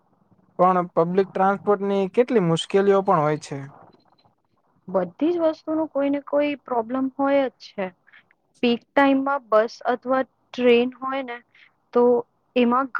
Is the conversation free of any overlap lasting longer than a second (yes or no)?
yes